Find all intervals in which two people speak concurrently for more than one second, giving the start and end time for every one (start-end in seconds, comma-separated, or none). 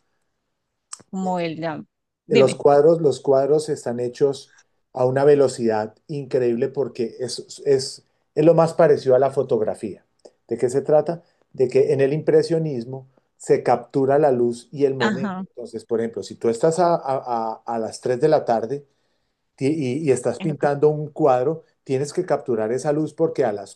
none